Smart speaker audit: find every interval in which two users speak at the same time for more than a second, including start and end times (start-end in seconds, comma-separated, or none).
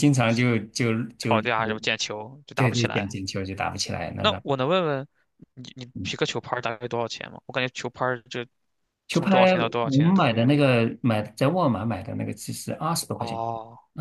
9.1-10.5